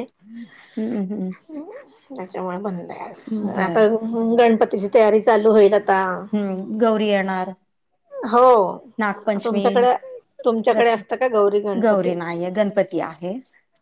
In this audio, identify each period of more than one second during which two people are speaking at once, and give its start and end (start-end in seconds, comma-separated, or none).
none